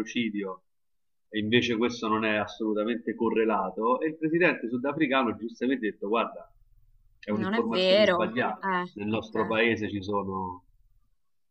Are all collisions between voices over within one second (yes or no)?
no